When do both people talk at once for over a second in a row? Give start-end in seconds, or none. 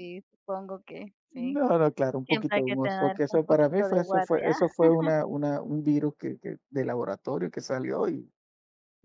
2.2-4.5